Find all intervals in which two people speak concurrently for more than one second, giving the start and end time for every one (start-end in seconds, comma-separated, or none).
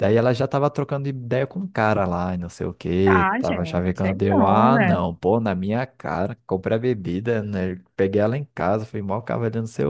3.0-5.0